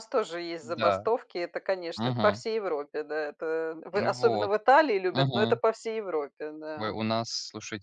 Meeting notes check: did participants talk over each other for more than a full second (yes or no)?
no